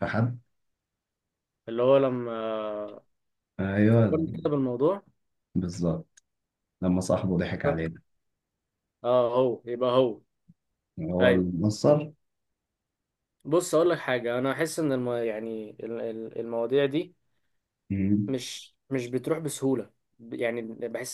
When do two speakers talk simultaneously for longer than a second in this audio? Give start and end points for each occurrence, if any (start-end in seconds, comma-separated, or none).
none